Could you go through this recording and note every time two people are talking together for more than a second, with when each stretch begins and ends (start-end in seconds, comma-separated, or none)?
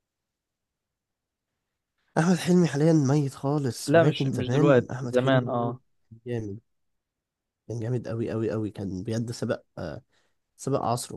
3.9-5.8